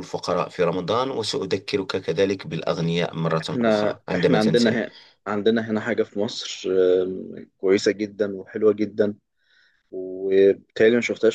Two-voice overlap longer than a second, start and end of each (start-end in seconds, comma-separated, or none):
3.4-4.8